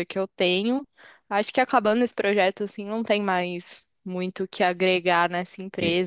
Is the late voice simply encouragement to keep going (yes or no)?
yes